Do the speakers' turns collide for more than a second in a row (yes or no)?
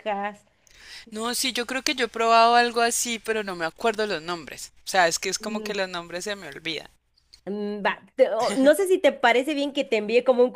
no